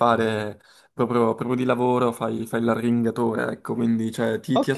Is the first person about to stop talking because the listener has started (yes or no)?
yes